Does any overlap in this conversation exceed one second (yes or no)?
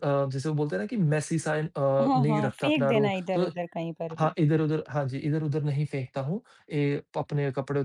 yes